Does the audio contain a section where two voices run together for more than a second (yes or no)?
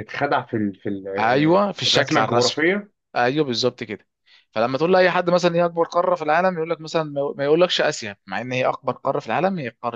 yes